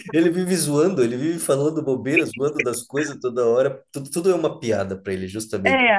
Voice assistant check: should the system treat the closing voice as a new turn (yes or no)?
yes